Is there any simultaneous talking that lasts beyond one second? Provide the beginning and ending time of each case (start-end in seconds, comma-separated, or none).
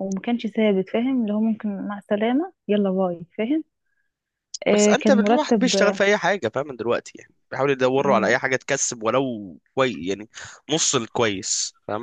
4.7-6.0